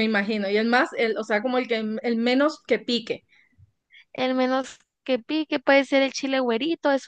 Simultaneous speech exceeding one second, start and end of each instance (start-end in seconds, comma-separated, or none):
none